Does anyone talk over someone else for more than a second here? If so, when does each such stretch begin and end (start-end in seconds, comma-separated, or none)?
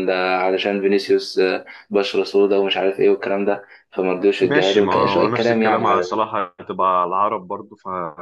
4.4-5.8